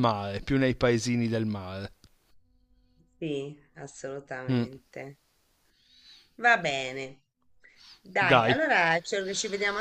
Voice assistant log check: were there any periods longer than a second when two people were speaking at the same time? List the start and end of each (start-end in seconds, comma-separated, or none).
none